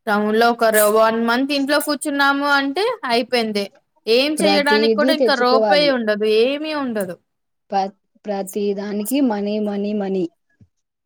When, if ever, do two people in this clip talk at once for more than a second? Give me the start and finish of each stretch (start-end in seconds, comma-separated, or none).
4.4-5.9